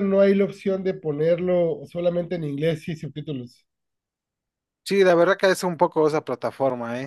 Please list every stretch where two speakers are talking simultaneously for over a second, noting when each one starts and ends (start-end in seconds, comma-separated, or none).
none